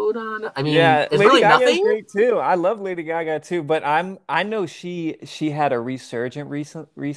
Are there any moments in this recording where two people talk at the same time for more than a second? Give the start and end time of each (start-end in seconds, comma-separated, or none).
0.6-1.9